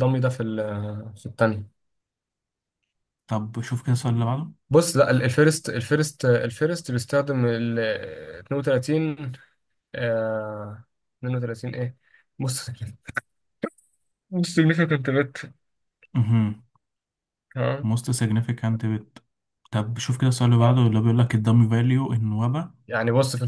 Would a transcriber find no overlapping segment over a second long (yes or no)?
yes